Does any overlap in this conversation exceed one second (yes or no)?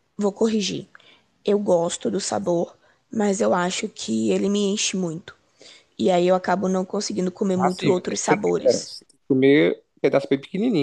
yes